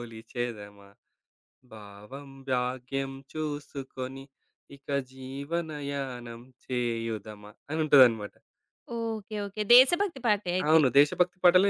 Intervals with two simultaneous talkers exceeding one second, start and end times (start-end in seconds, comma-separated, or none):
none